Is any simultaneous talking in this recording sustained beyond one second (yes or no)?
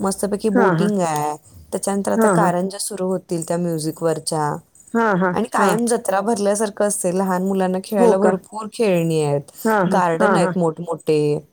no